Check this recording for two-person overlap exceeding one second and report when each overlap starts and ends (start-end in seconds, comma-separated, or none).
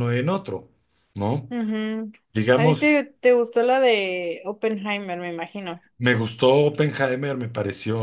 none